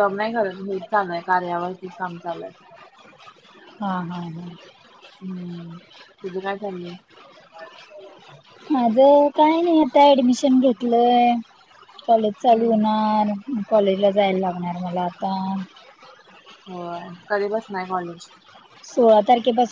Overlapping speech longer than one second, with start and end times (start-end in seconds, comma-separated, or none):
none